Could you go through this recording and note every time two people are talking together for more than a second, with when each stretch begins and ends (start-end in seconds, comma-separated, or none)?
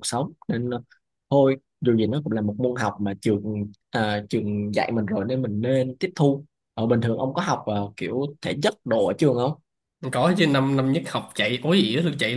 none